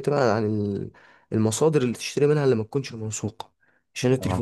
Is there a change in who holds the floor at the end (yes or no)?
no